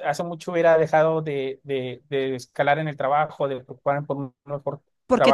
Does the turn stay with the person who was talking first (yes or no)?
no